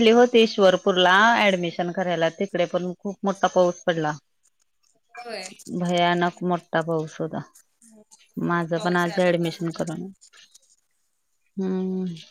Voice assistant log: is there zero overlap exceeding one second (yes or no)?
no